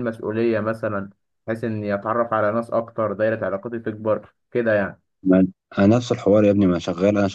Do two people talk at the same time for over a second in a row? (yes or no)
no